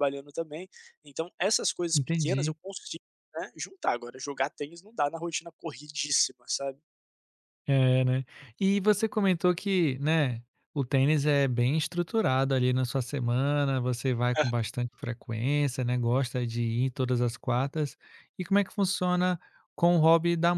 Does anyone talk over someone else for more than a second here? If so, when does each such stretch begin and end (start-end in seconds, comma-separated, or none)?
none